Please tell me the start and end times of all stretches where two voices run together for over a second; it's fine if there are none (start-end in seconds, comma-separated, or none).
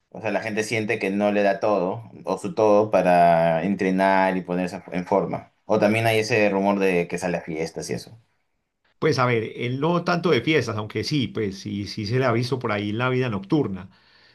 none